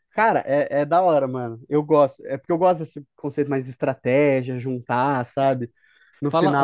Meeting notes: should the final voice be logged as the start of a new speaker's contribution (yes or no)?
yes